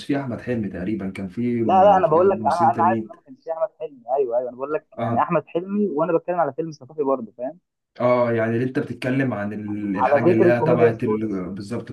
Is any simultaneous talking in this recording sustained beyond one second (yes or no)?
yes